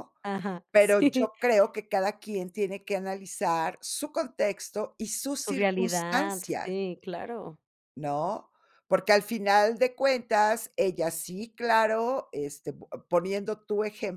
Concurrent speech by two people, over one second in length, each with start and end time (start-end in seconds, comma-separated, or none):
5.4-6.8